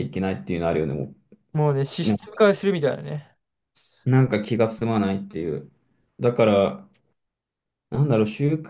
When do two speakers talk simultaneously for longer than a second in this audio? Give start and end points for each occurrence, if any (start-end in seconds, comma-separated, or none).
none